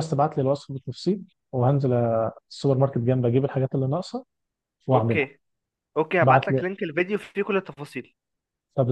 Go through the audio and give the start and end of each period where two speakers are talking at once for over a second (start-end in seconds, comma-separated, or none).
none